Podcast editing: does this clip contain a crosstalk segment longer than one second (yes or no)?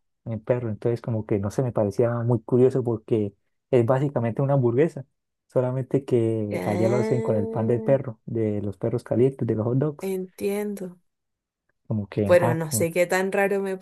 yes